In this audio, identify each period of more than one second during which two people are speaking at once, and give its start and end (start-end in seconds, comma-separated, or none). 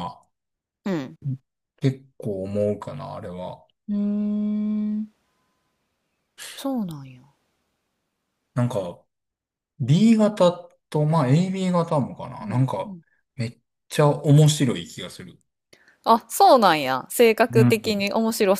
none